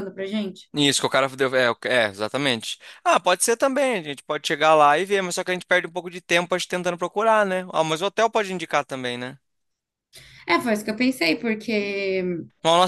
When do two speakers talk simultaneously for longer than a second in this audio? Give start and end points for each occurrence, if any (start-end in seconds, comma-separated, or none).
none